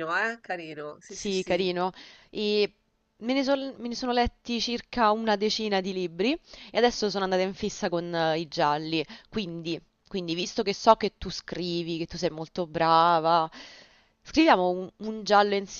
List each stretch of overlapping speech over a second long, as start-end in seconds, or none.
none